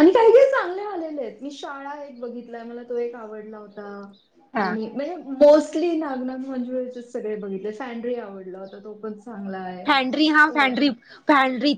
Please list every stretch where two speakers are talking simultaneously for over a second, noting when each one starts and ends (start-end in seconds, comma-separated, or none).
none